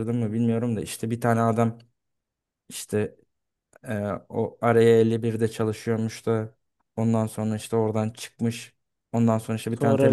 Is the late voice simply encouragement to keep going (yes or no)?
yes